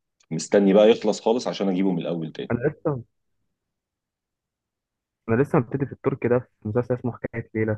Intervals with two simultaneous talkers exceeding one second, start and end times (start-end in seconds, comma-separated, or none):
none